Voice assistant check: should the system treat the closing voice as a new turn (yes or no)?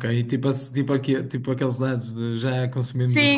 yes